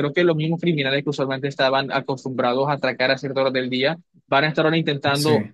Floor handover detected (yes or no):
no